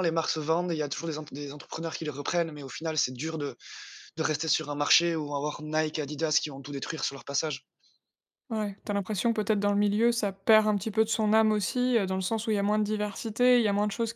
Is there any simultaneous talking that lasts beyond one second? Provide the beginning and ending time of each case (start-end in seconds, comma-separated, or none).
none